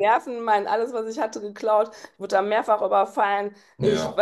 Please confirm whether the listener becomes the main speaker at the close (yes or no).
no